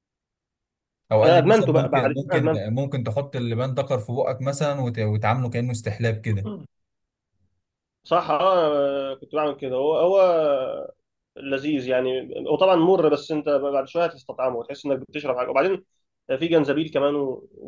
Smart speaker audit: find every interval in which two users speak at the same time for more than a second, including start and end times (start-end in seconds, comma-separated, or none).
1.2-2.6